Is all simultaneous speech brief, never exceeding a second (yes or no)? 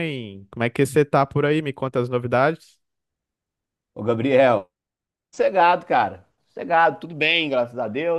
yes